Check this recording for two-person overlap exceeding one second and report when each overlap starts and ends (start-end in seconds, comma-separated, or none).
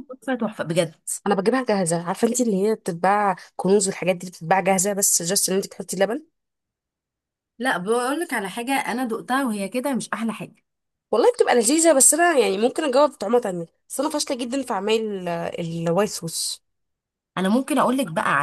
none